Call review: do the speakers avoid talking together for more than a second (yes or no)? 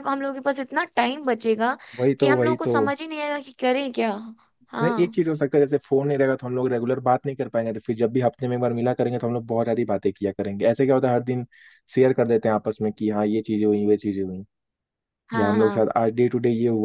yes